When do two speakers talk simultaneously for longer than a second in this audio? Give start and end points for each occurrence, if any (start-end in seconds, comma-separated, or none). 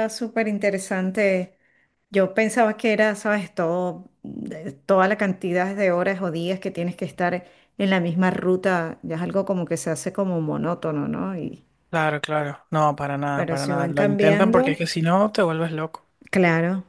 13.3-14.8